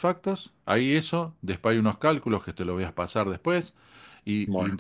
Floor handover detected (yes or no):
no